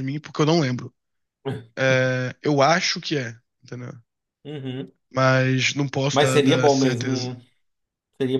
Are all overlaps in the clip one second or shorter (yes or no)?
no